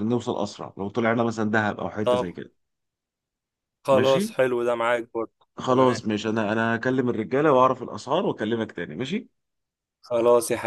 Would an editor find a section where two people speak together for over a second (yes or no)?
no